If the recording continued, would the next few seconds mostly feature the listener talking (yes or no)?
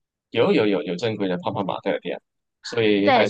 yes